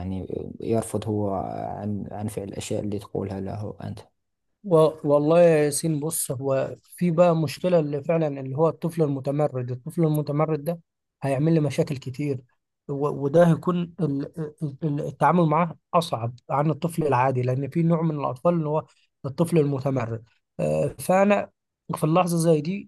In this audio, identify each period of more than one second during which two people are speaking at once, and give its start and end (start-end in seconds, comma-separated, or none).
none